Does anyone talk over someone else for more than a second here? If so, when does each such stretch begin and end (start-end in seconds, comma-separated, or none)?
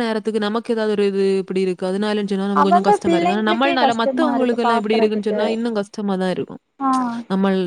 2.6-5.4